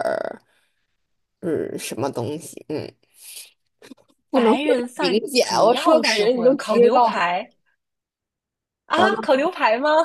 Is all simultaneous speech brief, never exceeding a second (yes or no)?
no